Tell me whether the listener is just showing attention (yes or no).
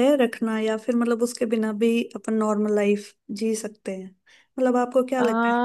yes